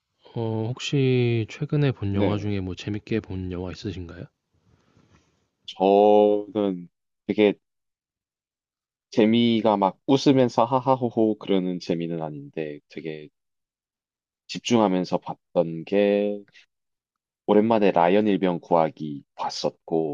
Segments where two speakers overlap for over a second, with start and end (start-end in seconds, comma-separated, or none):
none